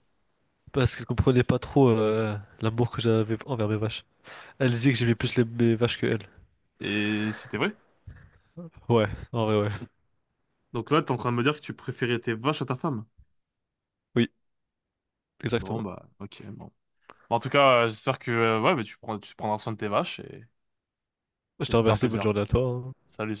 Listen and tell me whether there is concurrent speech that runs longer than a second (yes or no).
no